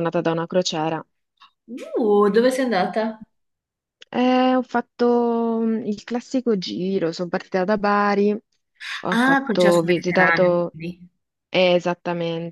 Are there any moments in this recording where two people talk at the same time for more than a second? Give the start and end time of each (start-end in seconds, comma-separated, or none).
9.1-10.8